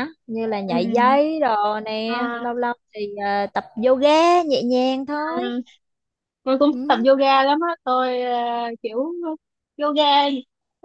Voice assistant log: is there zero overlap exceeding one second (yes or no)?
yes